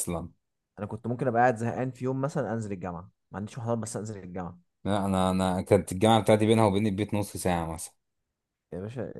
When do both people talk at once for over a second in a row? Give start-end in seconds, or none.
none